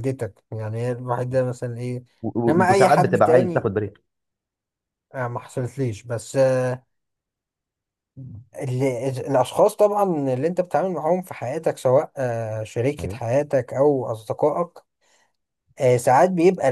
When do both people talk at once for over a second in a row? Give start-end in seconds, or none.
2.5-3.7